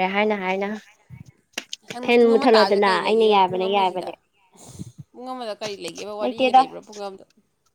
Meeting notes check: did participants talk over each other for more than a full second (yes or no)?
yes